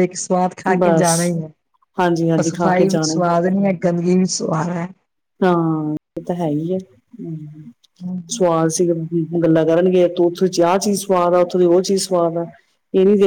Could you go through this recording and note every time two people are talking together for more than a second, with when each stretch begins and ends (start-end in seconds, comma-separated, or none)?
2.0-3.2